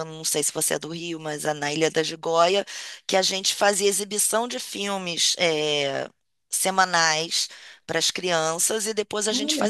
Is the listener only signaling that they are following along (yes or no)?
yes